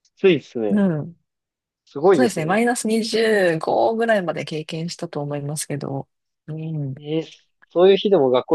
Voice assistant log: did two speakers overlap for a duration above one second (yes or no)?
no